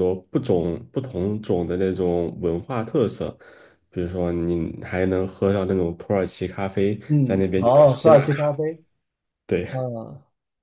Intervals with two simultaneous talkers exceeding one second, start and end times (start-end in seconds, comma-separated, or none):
7.1-8.5